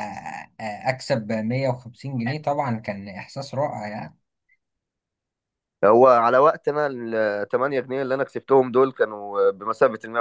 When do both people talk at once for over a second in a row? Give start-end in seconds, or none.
none